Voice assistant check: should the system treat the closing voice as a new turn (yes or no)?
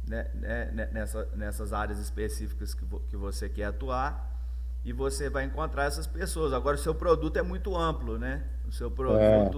no